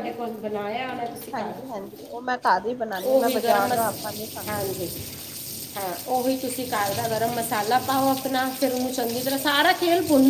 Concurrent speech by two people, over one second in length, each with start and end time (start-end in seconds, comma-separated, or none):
none